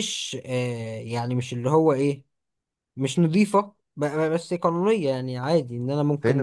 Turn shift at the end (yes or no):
yes